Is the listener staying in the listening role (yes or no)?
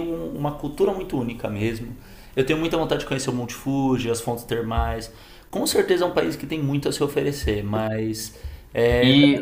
no